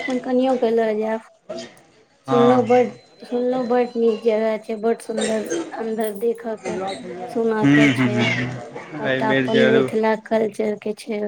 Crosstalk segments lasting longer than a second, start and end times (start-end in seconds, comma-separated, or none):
7.6-9.4